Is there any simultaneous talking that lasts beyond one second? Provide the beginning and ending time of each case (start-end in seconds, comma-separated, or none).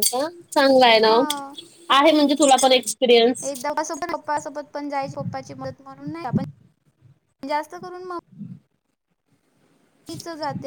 none